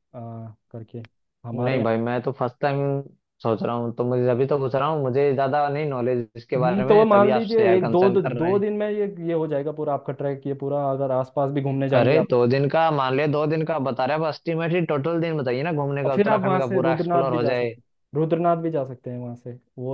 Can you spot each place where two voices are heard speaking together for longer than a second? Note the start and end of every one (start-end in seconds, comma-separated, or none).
6.6-8.6, 16.1-17.7